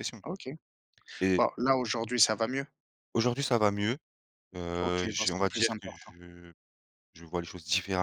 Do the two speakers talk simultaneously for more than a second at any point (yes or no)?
yes